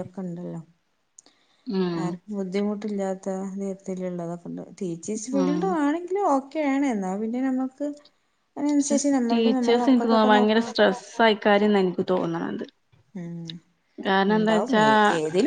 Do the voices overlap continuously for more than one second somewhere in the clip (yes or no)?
yes